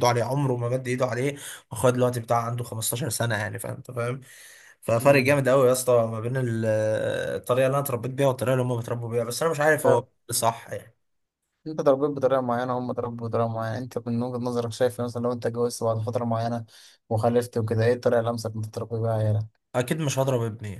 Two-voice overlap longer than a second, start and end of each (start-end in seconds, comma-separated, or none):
none